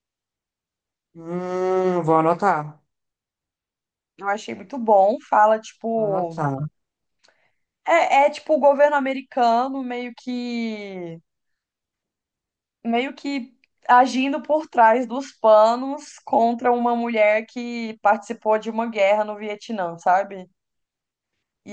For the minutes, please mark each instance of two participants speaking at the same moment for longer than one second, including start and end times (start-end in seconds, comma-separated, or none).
none